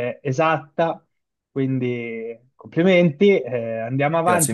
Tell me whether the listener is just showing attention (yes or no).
yes